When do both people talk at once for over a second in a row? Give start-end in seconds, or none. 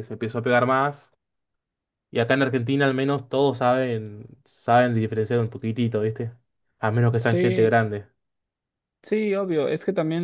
none